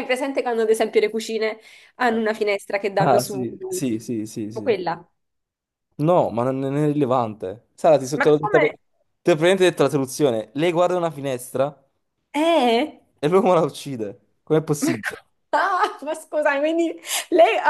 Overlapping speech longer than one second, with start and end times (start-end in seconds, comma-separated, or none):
3.0-4.8